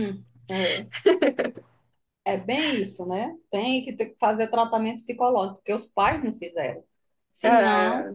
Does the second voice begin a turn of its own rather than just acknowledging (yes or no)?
no